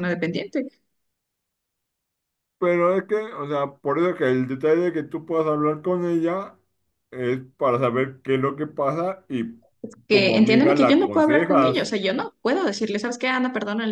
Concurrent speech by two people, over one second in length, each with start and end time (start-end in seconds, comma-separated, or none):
10.1-11.9